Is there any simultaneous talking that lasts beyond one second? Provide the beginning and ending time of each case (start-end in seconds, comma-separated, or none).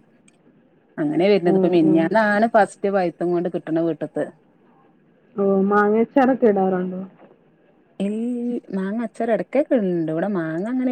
none